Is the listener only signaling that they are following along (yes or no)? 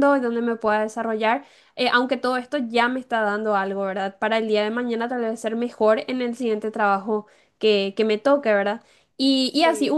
yes